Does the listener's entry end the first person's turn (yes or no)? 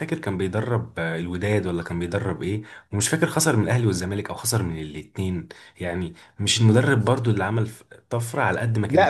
yes